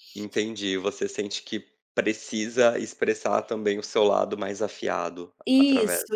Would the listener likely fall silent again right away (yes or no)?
no